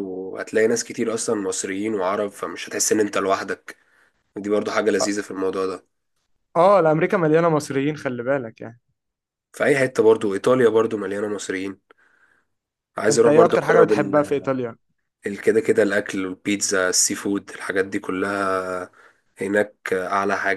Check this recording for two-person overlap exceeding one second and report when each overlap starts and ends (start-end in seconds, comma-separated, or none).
13.1-14.5